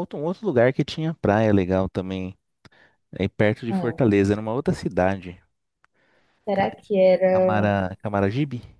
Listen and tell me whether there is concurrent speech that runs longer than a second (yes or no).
no